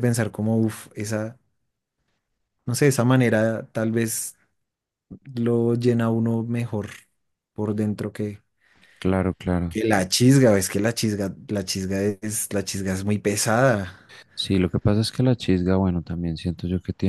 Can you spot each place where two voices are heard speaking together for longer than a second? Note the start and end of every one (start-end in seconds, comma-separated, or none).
none